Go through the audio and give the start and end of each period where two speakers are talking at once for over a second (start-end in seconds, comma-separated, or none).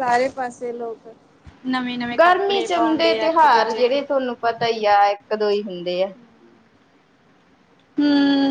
2.2-4.0